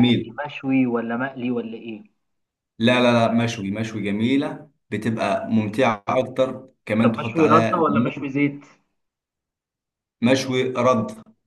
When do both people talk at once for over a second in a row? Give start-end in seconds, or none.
7.0-8.3